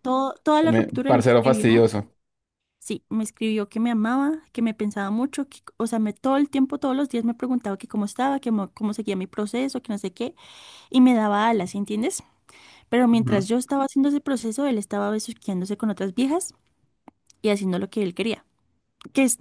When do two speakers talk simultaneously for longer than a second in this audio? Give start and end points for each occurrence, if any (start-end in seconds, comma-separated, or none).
0.6-1.9